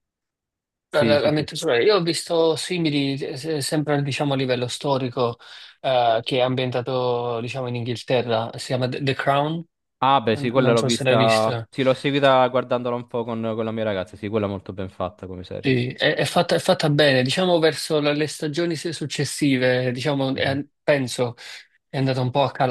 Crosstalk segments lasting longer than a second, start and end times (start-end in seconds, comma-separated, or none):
10.3-11.7